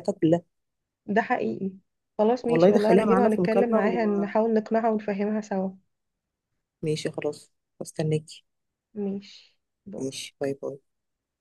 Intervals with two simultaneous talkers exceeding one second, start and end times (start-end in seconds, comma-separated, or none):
2.5-3.8